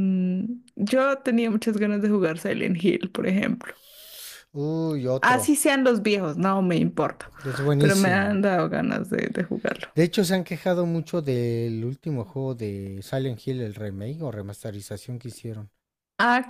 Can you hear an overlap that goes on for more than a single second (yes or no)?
no